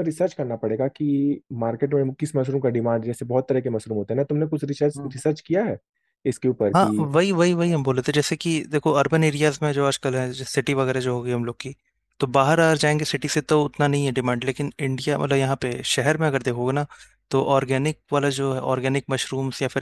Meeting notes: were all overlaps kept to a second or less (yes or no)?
yes